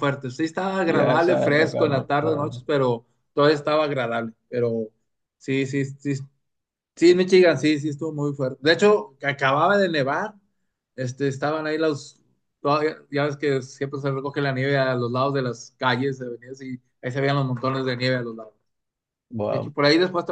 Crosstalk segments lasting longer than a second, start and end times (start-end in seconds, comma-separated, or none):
0.8-2.5